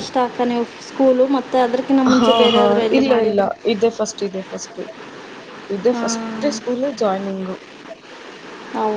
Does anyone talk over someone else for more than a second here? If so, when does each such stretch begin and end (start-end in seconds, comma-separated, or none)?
none